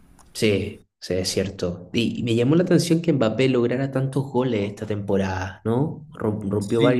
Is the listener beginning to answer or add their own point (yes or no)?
no